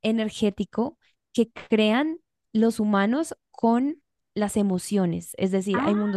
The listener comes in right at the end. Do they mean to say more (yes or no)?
no